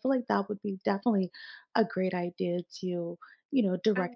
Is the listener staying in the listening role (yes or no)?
yes